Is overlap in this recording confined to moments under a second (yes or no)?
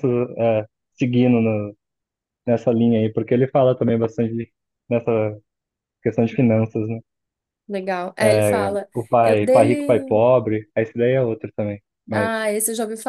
no